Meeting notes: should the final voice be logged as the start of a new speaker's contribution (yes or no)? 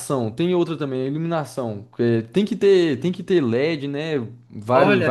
yes